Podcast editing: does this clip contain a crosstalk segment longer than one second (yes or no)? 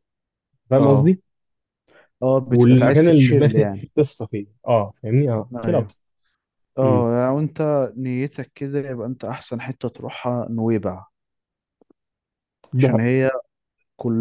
yes